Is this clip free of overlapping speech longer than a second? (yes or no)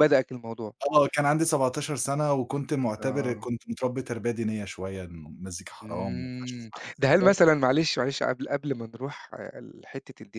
no